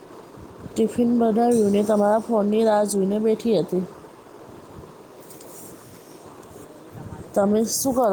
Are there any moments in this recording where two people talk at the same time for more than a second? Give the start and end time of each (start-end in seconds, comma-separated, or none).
1.7-3.2